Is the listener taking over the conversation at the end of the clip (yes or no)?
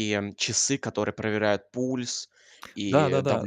yes